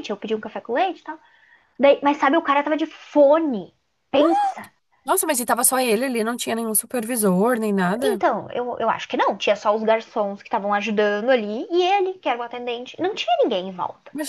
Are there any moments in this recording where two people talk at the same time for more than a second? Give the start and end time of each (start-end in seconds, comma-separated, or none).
none